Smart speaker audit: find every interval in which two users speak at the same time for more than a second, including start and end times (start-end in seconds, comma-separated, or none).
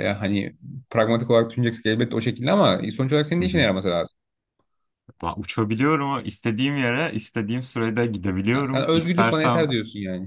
8.5-9.7